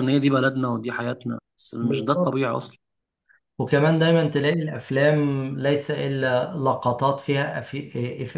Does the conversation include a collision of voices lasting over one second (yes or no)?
no